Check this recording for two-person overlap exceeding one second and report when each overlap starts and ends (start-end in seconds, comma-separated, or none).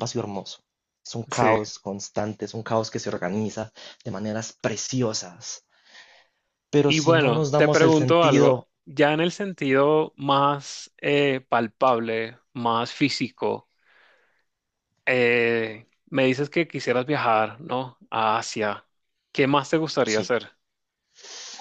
6.8-8.7